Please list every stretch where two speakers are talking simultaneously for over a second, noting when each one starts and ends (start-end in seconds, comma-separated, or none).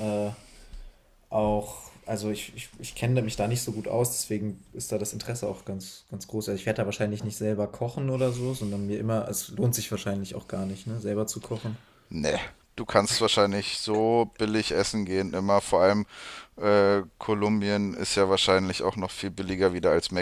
none